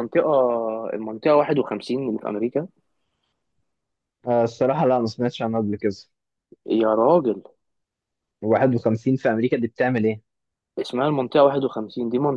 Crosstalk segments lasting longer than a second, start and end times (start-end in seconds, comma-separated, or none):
none